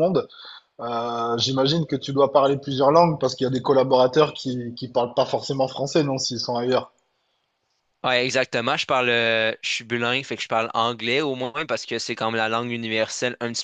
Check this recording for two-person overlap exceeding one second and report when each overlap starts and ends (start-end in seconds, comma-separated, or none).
none